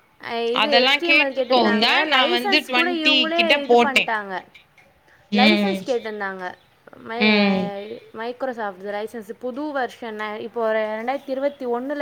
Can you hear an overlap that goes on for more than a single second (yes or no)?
yes